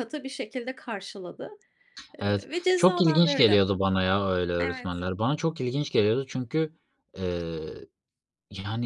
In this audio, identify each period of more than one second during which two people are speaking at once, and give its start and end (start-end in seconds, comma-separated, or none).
2.2-3.6